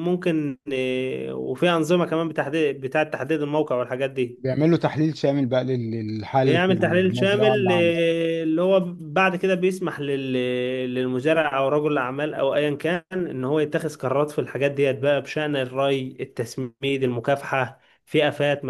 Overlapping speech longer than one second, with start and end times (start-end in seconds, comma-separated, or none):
6.4-8.0